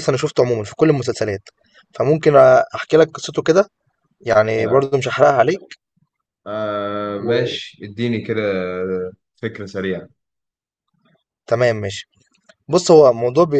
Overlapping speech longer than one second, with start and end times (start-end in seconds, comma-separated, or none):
none